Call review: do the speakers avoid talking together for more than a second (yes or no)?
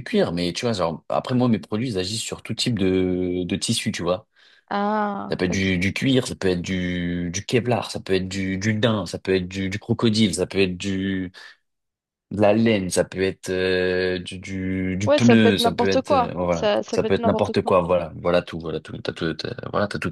no